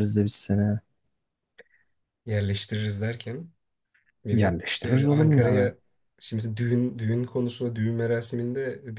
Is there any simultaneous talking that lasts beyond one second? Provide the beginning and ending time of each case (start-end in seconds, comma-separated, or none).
4.3-5.7